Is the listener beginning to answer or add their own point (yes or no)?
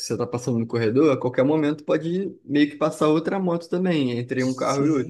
yes